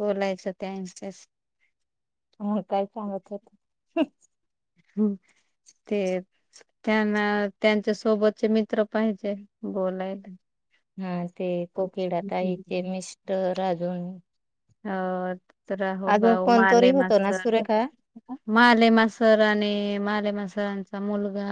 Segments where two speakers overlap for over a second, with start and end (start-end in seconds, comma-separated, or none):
16.1-17.4